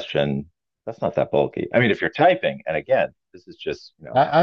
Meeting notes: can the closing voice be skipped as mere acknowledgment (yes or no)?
no